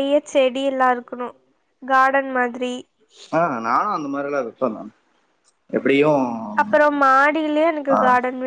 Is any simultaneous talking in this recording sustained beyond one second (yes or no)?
no